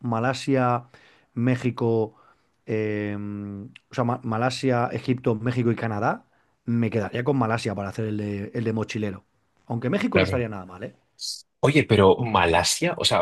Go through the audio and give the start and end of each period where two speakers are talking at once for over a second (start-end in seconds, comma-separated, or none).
none